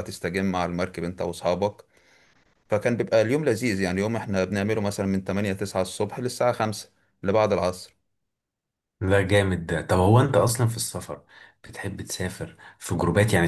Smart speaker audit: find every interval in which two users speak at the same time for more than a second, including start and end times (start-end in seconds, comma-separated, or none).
none